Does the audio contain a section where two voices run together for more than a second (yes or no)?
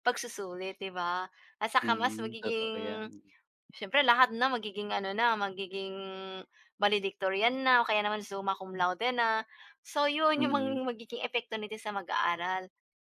yes